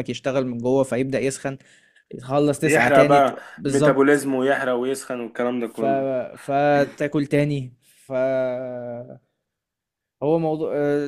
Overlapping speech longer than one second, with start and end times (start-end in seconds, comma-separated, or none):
2.6-4.2